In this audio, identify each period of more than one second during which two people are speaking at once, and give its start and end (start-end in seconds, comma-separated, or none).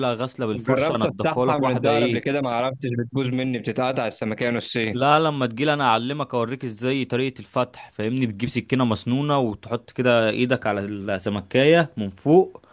0.5-2.4